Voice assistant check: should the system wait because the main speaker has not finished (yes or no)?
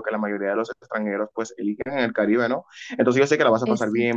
yes